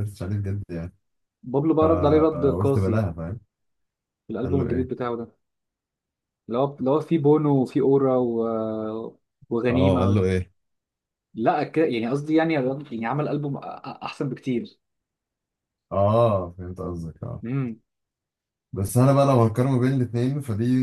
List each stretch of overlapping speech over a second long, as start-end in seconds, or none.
1.8-3.0